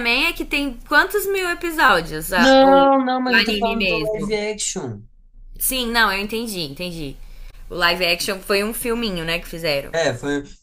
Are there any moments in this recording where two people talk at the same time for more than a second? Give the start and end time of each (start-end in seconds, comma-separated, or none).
2.4-4.4